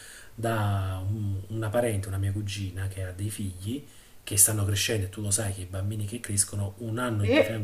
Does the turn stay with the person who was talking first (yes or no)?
yes